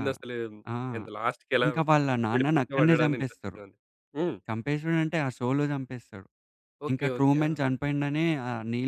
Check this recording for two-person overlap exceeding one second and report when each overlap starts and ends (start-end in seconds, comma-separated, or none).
2.3-3.6